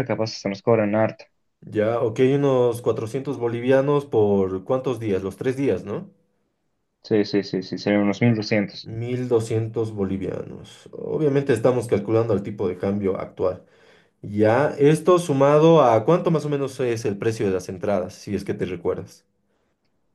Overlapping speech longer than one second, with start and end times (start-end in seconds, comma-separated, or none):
none